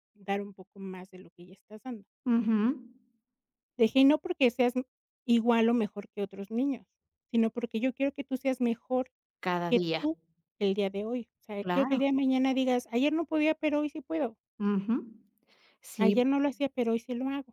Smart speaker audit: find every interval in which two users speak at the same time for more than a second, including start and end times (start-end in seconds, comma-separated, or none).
none